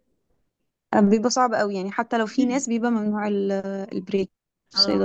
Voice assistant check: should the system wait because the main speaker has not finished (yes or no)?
no